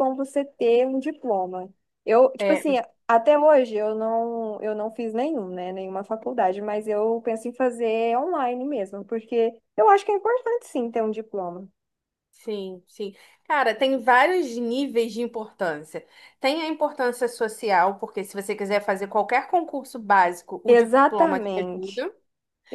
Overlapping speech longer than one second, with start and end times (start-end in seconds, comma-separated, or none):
20.7-22.0